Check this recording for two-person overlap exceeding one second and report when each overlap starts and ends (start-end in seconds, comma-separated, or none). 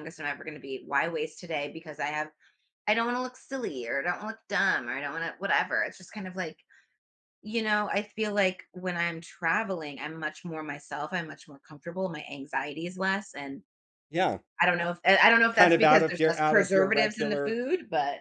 15.5-17.6